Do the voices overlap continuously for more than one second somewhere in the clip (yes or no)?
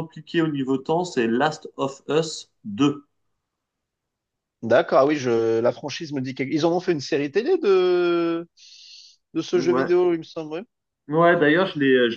no